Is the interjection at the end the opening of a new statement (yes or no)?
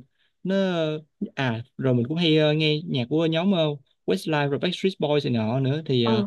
no